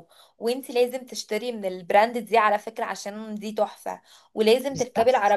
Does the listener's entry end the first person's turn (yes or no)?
no